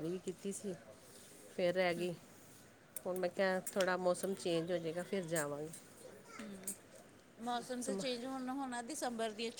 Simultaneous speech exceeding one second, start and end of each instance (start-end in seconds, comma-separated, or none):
none